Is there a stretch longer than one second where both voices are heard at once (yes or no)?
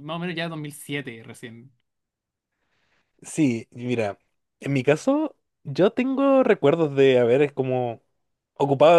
no